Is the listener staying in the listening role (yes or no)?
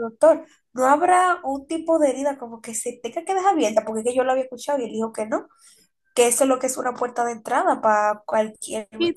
no